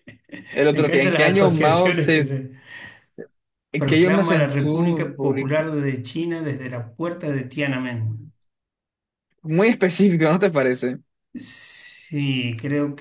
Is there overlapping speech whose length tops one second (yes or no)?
yes